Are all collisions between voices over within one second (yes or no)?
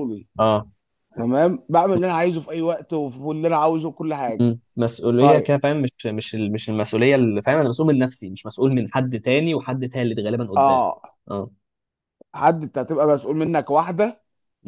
yes